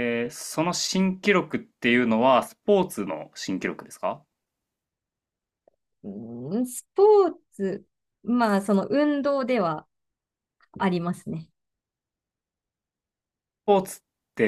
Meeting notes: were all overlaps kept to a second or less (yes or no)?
yes